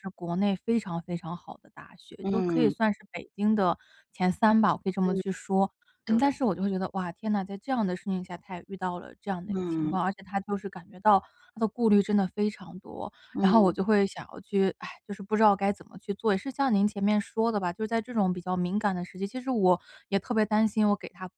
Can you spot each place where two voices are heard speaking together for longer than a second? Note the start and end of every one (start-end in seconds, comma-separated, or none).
none